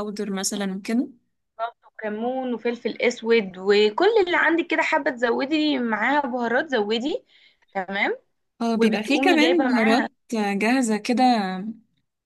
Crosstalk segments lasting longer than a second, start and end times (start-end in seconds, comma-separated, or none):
8.7-10.1